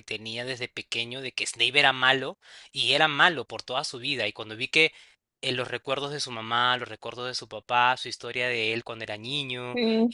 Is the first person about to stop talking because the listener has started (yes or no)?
no